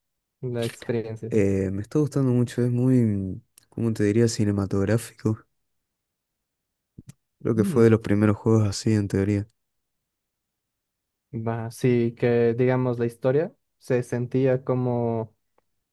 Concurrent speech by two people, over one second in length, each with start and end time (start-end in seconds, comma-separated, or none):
none